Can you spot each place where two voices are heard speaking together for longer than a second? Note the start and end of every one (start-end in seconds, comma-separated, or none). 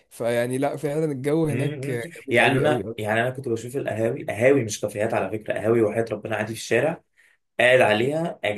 1.5-2.9